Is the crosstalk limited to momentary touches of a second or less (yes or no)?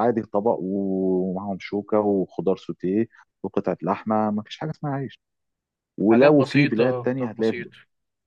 no